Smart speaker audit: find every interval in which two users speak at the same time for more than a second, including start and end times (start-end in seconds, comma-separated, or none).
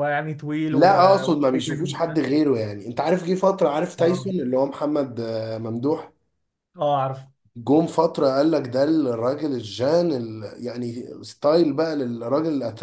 0.7-2.2